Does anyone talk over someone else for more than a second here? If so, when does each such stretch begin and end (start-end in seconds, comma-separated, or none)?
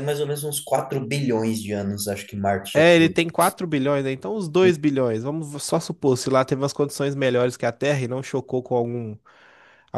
none